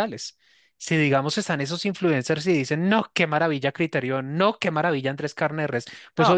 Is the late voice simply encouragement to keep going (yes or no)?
yes